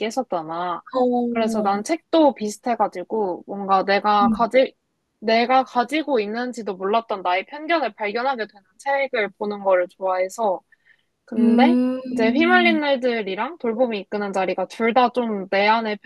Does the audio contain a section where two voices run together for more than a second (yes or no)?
yes